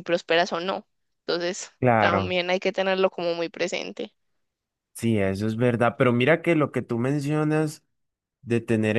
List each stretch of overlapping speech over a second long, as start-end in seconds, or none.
none